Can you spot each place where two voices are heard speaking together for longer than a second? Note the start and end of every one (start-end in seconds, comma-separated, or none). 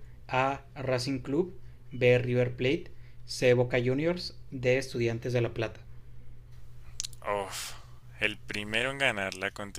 none